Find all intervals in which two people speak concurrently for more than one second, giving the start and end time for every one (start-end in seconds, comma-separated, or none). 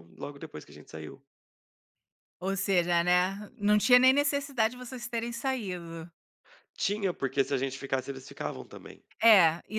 none